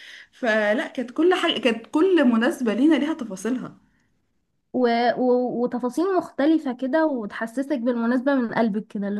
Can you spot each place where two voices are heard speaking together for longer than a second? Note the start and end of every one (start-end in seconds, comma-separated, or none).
none